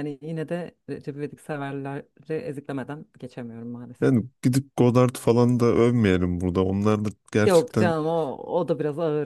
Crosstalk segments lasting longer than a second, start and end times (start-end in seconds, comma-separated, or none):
none